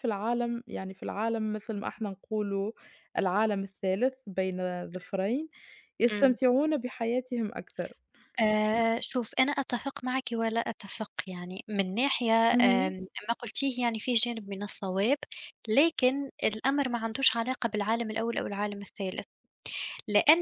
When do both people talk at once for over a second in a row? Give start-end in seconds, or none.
none